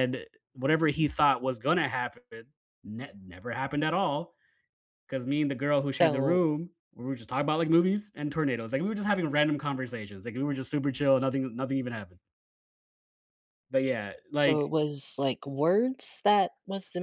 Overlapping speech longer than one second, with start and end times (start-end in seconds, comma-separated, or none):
none